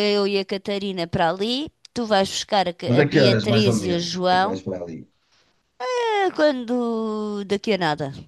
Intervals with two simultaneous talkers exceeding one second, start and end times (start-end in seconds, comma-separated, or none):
2.9-4.6